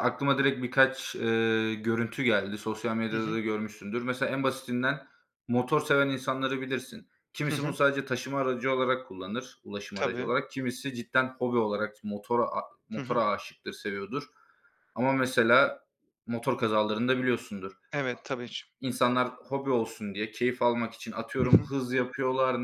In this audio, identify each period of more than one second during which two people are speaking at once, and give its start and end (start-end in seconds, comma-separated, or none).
none